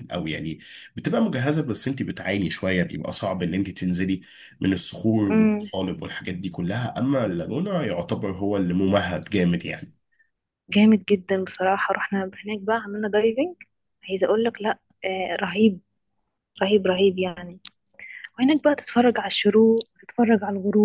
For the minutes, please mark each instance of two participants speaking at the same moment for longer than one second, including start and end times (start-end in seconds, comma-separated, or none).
none